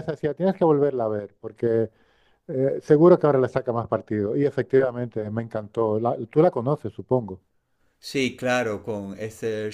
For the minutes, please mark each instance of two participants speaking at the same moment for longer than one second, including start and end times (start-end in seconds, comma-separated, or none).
none